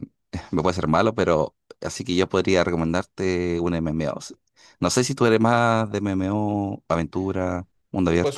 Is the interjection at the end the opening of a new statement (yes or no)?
yes